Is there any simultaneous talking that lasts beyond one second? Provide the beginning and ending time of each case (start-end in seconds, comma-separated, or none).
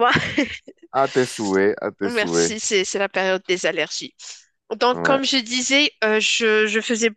none